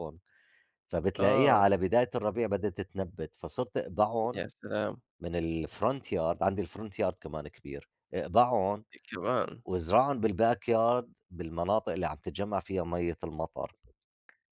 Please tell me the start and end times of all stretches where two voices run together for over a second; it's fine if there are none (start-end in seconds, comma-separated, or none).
none